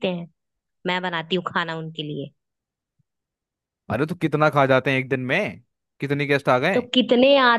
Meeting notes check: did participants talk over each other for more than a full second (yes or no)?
no